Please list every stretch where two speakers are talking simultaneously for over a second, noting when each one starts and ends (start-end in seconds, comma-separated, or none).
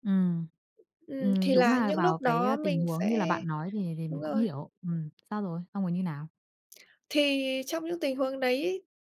1.2-3.4